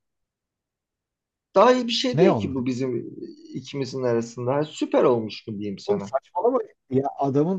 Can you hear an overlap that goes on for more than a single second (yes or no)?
no